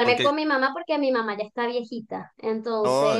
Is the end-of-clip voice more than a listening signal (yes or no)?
yes